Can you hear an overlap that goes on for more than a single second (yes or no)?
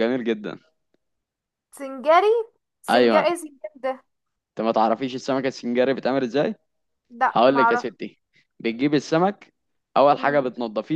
no